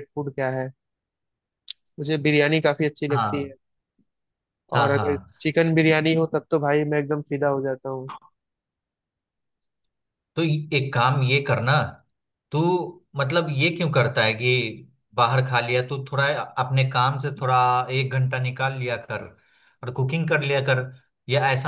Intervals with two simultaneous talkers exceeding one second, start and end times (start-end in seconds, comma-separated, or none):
none